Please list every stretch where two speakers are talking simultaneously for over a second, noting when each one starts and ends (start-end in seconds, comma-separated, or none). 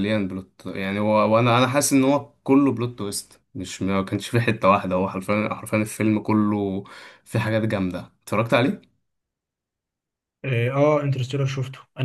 none